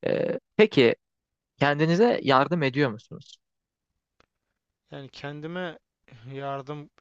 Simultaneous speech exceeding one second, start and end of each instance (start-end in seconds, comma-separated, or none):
none